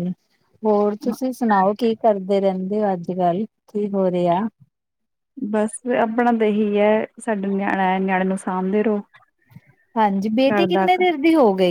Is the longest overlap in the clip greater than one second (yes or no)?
no